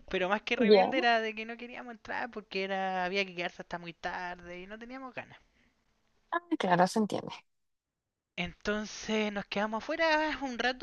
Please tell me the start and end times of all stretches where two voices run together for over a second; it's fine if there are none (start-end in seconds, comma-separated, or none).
none